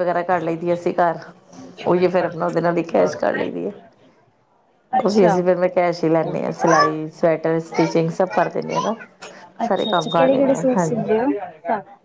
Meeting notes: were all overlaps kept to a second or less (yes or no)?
no